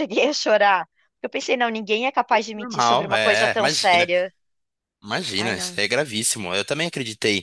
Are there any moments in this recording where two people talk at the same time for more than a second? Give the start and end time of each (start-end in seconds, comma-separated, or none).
2.6-4.1